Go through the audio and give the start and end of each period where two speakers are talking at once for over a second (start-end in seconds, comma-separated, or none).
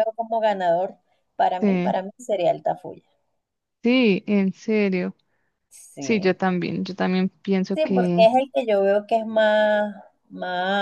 none